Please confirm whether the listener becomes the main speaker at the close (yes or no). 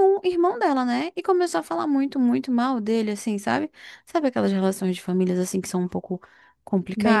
yes